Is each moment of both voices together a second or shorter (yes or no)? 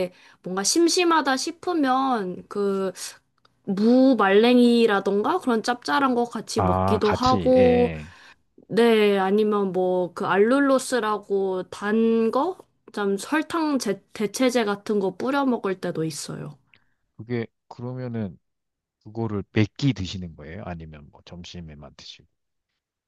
no